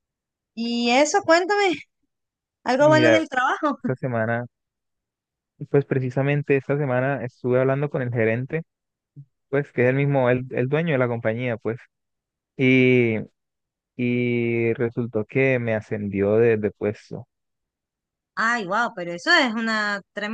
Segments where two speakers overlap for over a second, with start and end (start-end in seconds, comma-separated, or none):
none